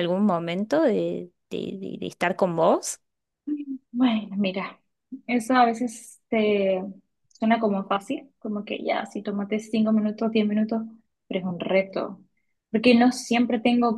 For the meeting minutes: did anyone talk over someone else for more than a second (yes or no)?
no